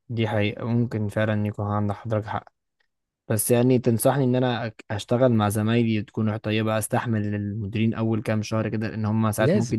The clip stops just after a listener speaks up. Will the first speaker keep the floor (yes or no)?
yes